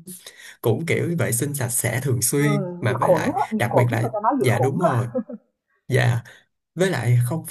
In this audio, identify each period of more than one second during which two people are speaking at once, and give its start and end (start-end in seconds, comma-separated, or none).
2.4-5.1